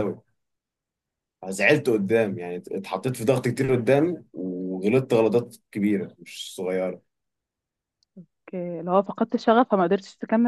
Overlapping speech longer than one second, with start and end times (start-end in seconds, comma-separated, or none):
none